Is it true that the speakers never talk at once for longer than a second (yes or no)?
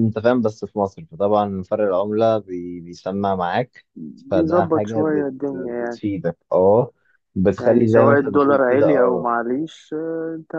no